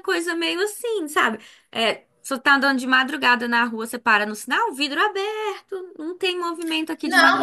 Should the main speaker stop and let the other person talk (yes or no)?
yes